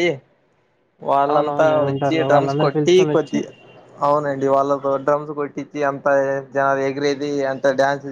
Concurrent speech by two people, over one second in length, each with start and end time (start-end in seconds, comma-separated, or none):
1.3-3.4